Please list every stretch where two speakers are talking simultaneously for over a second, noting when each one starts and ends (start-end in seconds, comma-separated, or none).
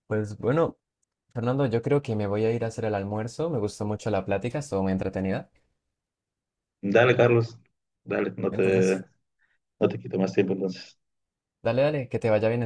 none